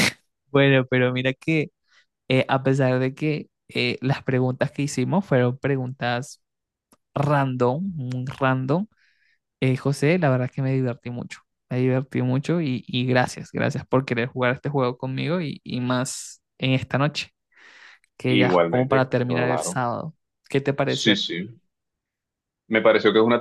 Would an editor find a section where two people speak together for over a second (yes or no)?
yes